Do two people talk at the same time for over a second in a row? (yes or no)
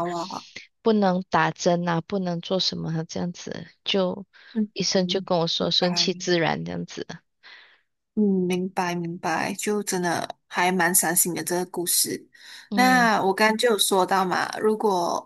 yes